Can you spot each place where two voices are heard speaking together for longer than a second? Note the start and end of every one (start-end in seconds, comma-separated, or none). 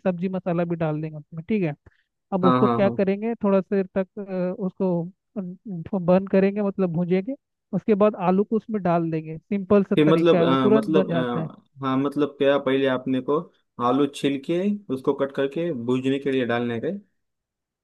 9.9-11.5